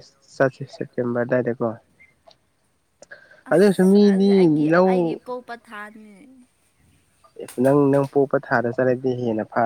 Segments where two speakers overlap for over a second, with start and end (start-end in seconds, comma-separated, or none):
3.5-5.2